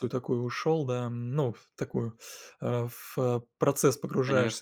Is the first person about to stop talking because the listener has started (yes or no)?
no